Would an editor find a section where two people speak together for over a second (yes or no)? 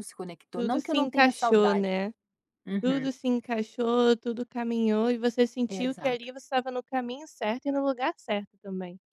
yes